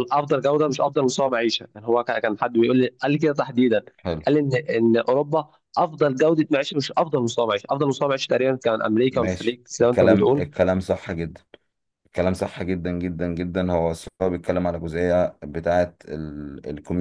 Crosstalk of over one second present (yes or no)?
yes